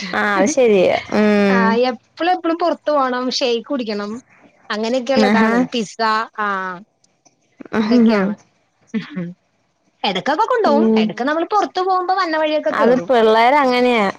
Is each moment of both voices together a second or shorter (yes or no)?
yes